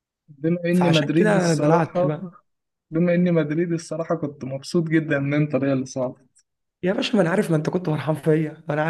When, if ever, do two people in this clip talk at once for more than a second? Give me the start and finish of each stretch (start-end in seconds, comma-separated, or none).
0.7-2.2